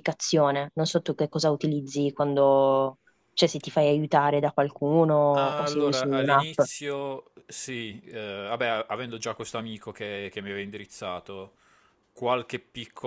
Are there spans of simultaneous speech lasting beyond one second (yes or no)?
yes